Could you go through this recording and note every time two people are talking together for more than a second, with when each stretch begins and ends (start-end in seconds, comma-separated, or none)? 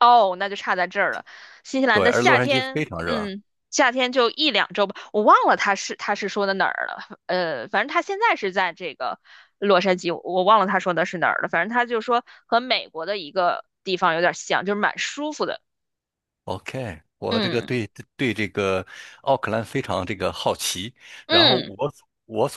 1.9-3.3